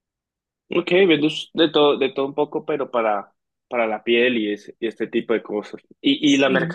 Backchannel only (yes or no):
yes